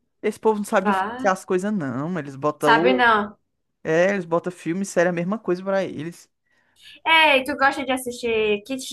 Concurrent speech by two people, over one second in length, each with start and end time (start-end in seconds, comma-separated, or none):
none